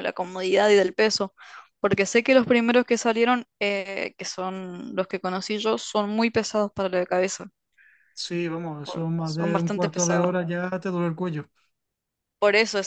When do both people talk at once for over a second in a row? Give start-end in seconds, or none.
8.8-10.3